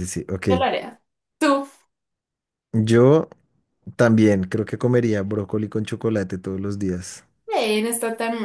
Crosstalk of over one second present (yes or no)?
no